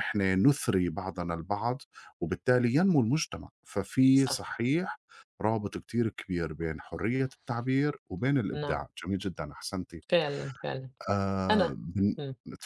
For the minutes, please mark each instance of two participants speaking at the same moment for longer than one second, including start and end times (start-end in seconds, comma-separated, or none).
none